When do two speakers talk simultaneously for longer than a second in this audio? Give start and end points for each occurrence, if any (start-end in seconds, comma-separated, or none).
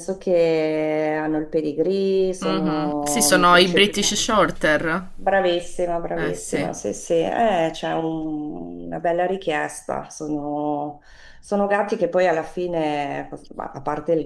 2.4-4.2